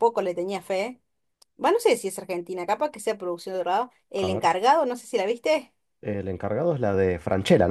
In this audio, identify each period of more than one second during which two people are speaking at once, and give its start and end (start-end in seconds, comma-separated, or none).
none